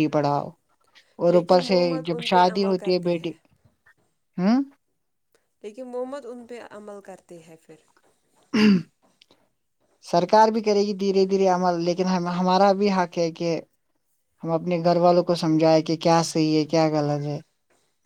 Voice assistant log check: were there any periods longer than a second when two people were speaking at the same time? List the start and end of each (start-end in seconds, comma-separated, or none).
1.3-3.3